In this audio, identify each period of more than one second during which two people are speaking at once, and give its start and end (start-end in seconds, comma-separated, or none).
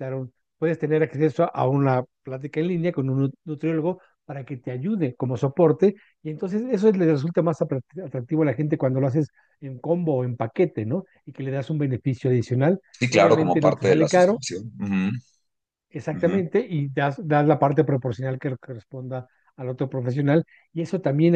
13.0-14.4